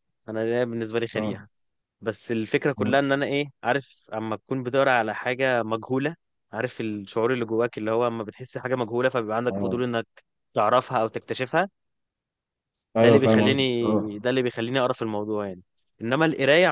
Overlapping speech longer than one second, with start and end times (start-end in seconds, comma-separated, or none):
13.0-14.3